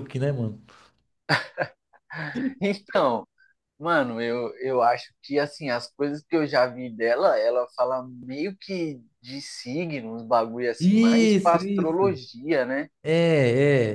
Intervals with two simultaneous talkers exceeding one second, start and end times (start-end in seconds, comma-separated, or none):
10.8-12.2